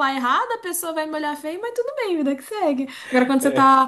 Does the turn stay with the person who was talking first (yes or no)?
yes